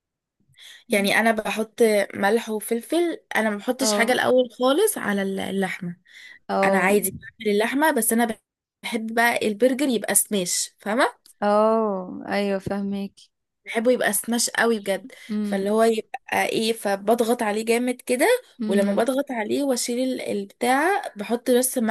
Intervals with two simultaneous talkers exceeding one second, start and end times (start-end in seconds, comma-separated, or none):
none